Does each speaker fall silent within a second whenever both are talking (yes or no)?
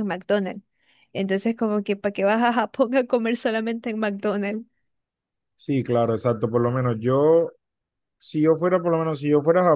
yes